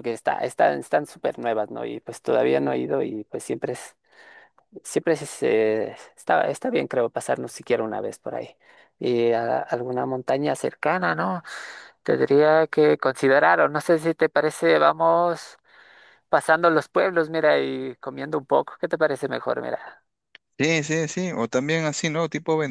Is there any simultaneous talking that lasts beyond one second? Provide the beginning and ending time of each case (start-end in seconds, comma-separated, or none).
none